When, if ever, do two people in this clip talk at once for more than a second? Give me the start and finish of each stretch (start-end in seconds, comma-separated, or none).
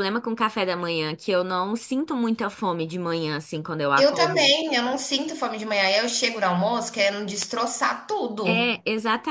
none